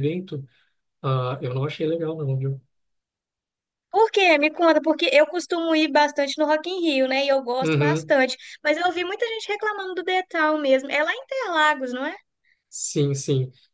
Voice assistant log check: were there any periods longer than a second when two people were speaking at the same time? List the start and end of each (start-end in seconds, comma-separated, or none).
none